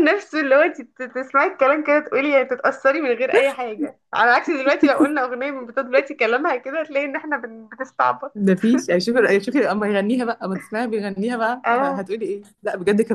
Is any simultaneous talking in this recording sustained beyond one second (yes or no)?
no